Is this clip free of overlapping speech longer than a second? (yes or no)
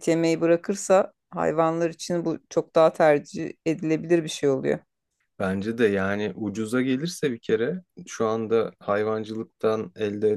yes